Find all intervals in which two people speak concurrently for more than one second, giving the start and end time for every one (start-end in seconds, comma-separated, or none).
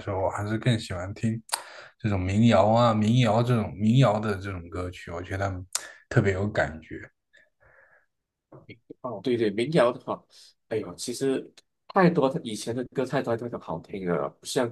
none